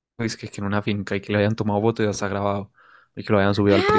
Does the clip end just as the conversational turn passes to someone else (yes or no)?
yes